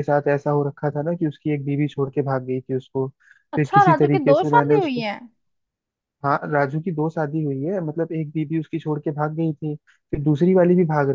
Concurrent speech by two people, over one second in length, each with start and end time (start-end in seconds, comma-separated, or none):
3.5-5.1